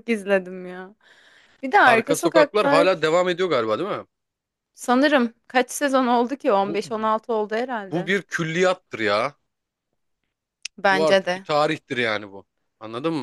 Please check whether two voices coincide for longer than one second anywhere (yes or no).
yes